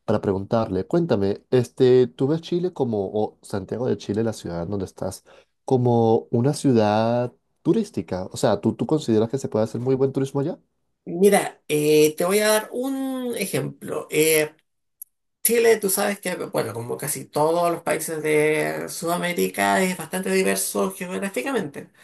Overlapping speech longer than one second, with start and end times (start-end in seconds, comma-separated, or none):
none